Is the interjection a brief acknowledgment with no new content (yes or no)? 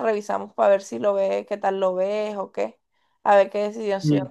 no